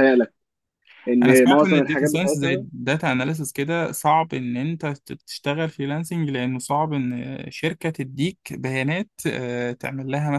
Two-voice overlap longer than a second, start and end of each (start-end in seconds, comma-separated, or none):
1.2-2.6